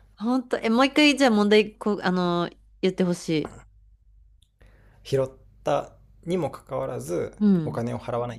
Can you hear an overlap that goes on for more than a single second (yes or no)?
no